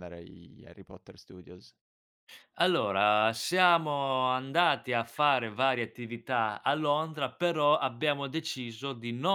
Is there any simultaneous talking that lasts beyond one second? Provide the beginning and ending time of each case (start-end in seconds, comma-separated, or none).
none